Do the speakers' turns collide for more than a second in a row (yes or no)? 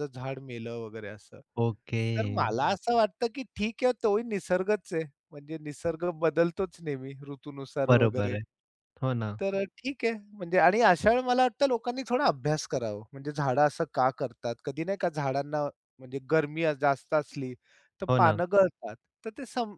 no